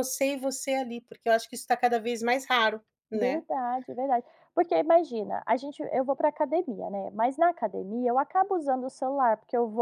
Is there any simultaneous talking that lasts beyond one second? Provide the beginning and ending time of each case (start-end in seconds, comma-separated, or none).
none